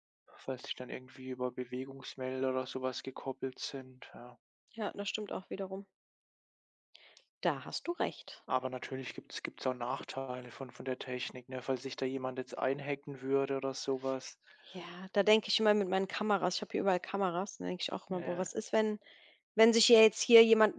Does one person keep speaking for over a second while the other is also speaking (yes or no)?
no